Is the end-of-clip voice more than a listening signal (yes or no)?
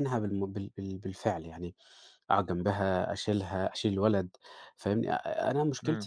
no